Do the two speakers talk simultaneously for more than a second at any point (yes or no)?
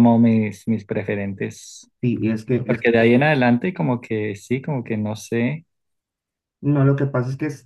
no